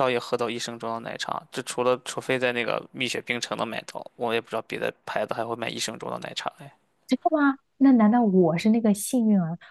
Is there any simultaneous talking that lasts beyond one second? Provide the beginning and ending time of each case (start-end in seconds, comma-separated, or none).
none